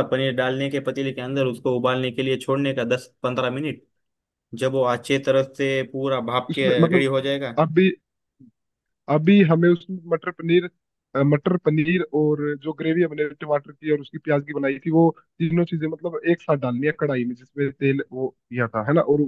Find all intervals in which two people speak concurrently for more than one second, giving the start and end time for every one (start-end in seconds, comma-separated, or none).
none